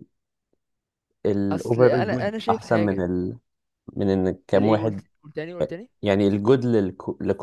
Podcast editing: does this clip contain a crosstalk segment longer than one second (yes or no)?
yes